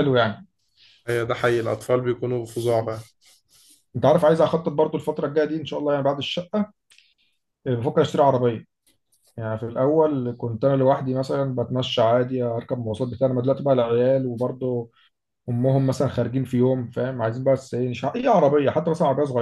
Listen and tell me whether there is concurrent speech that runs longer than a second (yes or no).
no